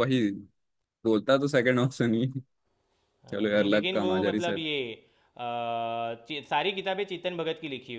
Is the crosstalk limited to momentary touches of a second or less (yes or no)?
no